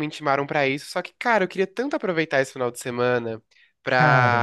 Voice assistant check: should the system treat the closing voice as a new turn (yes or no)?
no